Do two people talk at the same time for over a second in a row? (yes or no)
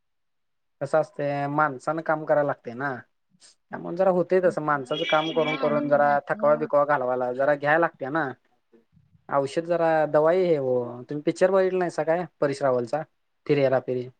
yes